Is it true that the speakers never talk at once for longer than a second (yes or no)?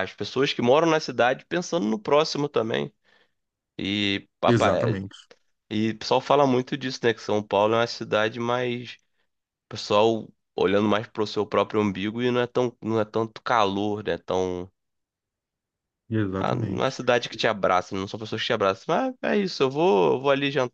yes